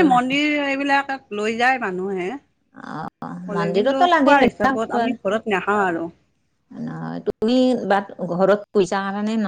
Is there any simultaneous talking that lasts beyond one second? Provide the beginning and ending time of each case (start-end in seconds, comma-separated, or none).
3.5-5.1